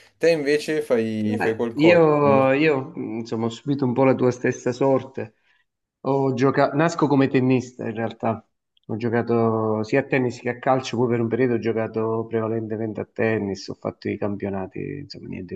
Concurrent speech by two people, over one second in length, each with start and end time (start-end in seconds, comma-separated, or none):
1.2-2.5